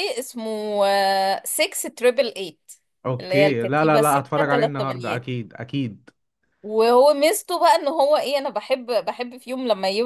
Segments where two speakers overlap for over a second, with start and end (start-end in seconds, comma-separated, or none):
3.2-4.9